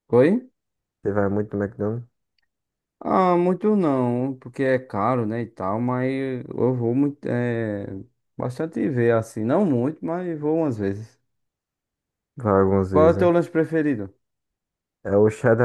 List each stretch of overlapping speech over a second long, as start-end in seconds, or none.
none